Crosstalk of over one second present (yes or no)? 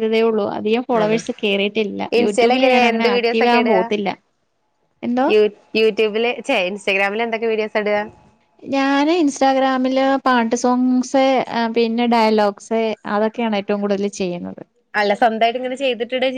yes